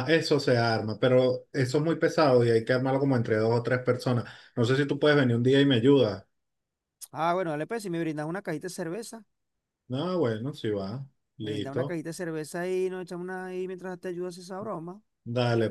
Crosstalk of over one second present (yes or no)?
no